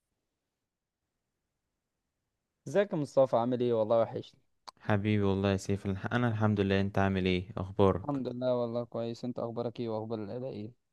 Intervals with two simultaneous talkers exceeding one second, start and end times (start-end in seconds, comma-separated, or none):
none